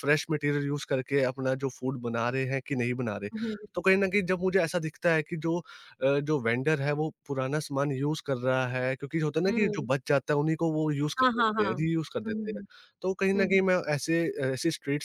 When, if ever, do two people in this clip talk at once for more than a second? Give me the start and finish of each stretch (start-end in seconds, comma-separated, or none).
11.2-12.6